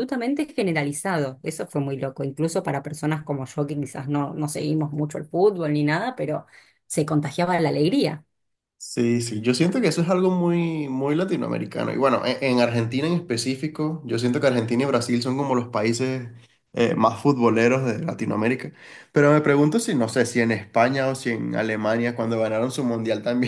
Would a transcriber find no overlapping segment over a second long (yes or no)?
yes